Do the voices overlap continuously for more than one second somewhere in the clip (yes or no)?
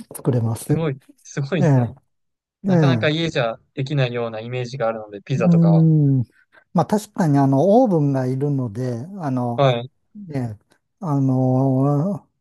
no